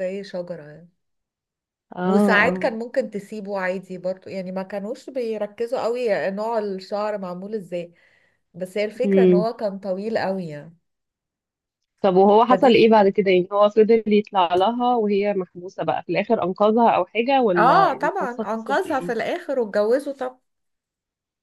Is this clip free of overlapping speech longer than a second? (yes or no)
no